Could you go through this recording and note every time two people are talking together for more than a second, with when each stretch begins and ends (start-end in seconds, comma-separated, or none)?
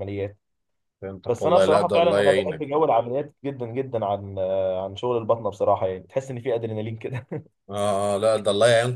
1.3-2.6